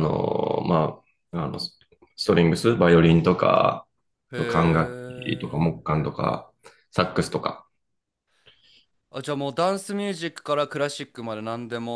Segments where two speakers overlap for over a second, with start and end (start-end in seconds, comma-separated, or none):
4.3-5.7